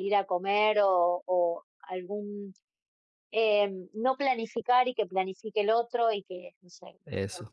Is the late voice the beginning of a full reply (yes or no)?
no